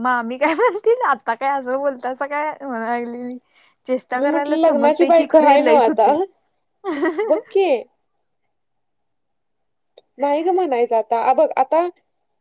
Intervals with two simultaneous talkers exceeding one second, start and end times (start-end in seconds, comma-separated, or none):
4.2-6.1